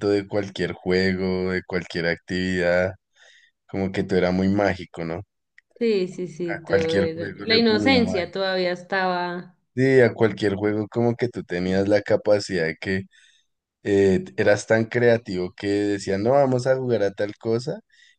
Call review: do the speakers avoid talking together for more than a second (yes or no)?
no